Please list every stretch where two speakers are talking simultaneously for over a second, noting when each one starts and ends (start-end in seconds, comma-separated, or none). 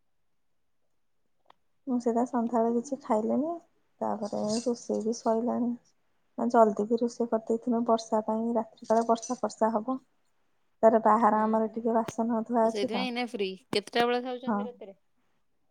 none